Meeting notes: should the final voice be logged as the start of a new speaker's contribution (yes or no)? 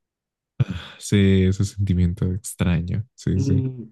yes